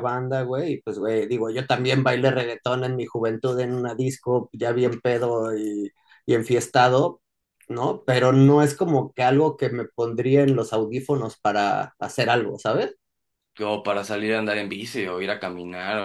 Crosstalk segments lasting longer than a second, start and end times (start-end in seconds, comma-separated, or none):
none